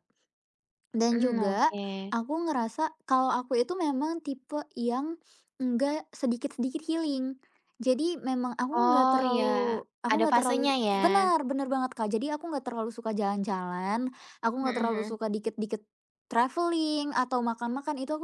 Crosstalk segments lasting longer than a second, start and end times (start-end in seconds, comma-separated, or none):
8.7-11.0